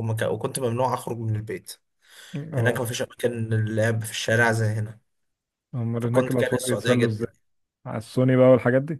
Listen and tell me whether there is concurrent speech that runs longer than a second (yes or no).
yes